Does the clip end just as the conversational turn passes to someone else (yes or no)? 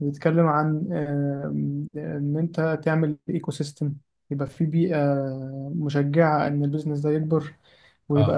no